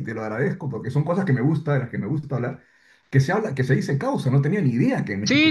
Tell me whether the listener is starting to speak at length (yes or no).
yes